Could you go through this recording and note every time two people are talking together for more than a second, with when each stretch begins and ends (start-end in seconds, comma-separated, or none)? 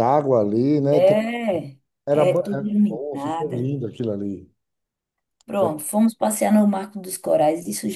2.1-3.7